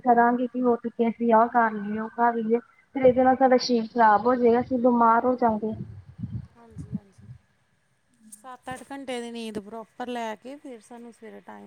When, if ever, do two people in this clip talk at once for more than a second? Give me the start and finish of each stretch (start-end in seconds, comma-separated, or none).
none